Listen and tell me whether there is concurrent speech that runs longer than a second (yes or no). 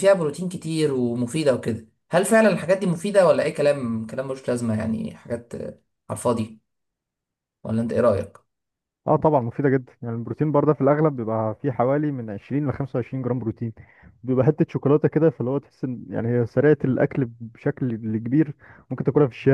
no